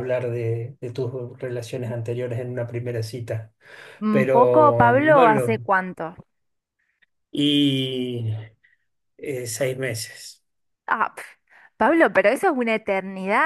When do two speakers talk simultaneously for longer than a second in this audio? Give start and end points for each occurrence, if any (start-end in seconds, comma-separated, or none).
4.1-5.7